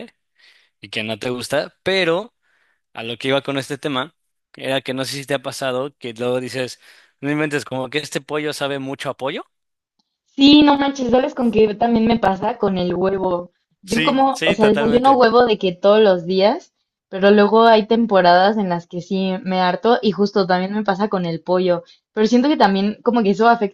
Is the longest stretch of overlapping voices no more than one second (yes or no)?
no